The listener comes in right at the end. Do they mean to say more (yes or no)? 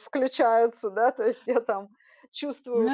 yes